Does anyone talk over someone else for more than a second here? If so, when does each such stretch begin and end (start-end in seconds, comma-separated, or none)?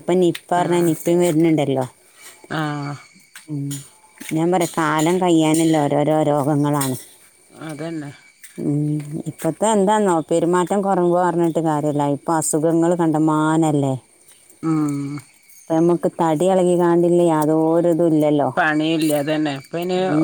none